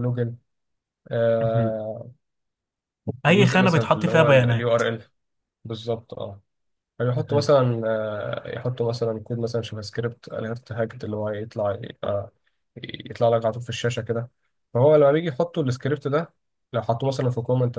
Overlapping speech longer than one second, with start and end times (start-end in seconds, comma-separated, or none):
3.3-4.8